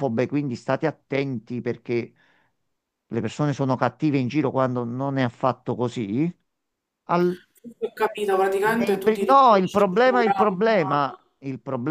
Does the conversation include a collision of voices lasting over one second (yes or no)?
yes